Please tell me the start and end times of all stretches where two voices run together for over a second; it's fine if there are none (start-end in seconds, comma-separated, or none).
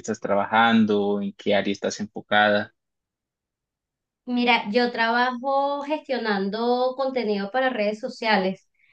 none